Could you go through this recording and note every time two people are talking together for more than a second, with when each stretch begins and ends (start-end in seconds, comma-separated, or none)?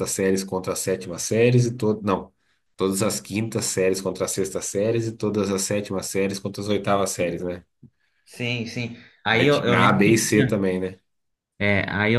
9.3-10.6